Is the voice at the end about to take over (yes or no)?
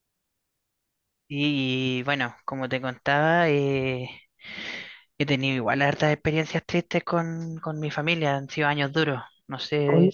yes